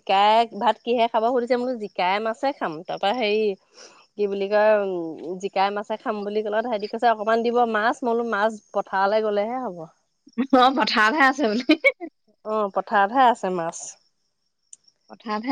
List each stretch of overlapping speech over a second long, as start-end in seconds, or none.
none